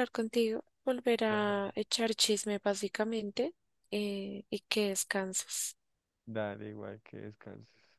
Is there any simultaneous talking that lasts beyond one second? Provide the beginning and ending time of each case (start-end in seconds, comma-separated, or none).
none